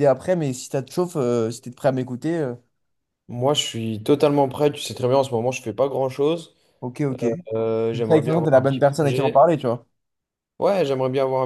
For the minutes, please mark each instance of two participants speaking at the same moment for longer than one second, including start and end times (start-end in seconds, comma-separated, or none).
7.9-9.5